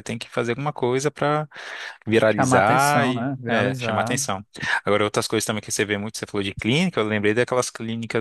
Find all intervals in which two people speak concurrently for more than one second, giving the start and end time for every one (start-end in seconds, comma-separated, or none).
2.3-4.2